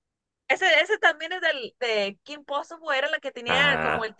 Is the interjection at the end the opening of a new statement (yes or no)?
no